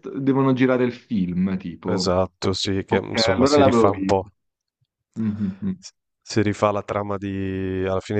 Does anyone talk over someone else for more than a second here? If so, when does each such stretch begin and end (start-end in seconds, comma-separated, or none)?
2.9-4.2